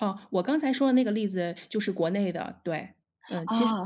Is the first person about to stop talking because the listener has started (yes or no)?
yes